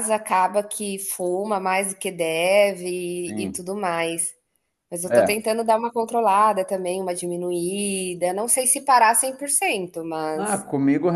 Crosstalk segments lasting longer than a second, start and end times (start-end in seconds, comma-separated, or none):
none